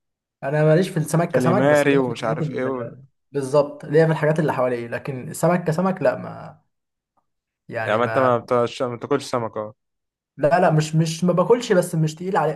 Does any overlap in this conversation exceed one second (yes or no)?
yes